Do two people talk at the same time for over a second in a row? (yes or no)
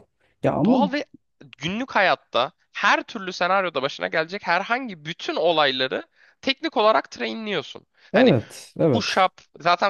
no